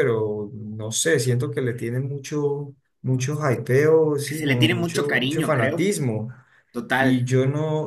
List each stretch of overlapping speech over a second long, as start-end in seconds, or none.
4.2-5.9